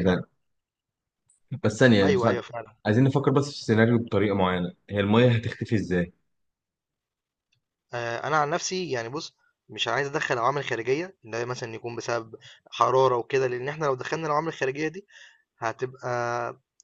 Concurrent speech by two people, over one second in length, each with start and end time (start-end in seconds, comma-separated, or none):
none